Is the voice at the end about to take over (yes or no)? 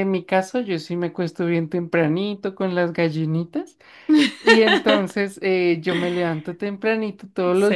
no